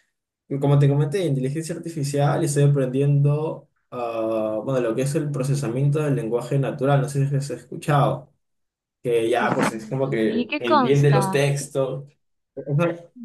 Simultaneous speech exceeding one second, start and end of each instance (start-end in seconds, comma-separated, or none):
9.4-11.5